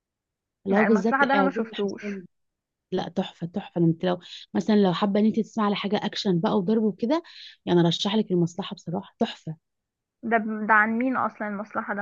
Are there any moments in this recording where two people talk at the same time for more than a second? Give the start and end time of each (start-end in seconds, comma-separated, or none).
0.7-2.2